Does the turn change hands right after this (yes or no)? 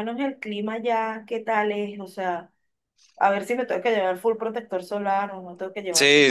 yes